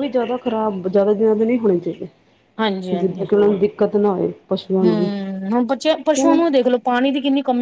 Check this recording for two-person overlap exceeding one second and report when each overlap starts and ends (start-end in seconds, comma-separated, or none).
none